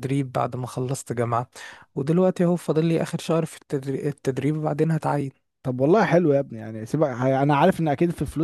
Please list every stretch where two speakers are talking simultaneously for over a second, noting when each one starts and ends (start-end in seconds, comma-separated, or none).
none